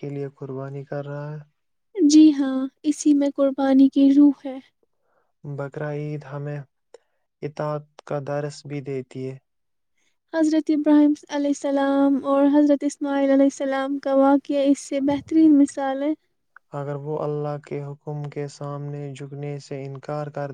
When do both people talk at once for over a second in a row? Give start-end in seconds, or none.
none